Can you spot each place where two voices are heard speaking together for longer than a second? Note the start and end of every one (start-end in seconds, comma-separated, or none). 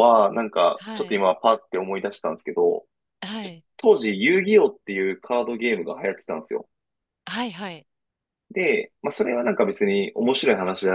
none